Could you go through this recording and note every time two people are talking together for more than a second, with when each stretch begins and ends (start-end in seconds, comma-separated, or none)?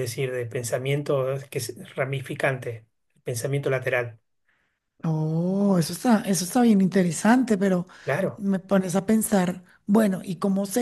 none